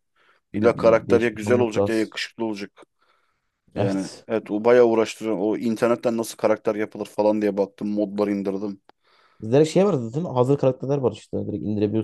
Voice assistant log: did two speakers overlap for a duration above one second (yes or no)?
yes